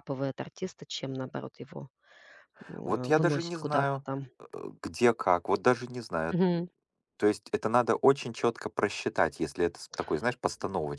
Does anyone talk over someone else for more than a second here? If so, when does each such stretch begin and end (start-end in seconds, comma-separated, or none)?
2.8-4.3